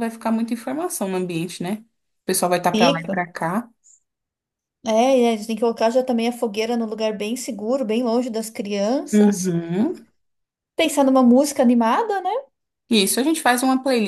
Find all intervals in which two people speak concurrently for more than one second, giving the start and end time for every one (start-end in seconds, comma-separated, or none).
none